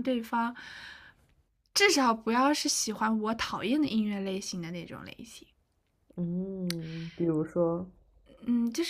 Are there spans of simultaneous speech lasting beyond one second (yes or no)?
no